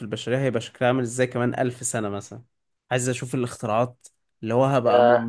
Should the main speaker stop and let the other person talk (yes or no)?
no